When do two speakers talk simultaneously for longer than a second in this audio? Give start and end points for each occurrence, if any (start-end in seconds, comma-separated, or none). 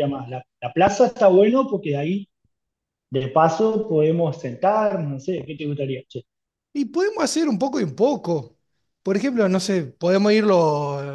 none